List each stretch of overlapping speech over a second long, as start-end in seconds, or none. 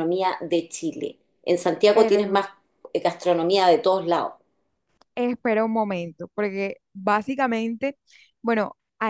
none